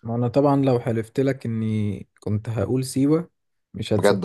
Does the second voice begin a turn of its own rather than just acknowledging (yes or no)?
no